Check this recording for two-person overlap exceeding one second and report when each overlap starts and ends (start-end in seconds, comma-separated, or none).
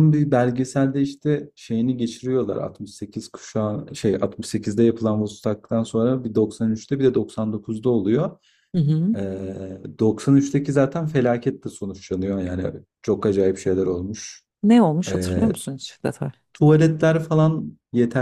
none